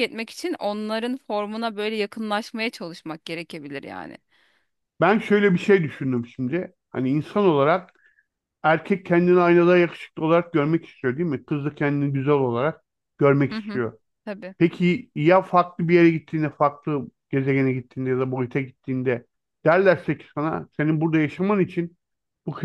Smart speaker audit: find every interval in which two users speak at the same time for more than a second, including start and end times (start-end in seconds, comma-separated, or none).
none